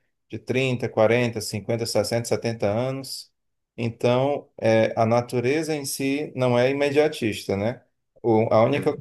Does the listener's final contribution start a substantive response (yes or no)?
no